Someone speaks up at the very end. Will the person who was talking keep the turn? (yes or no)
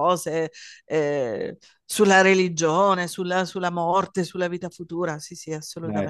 no